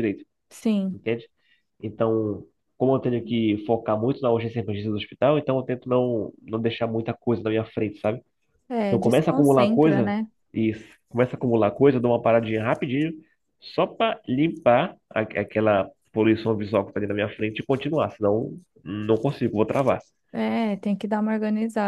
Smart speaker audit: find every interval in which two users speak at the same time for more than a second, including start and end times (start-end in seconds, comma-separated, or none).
8.9-10.1